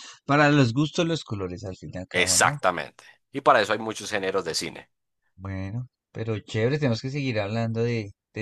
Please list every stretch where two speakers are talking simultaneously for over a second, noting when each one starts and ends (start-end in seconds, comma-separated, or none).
none